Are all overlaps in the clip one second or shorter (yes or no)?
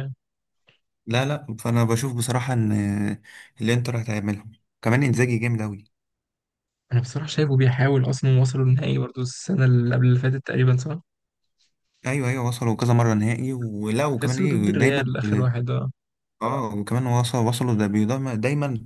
no